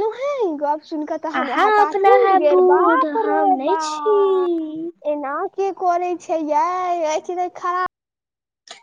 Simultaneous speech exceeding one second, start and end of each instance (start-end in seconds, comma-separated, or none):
1.4-4.2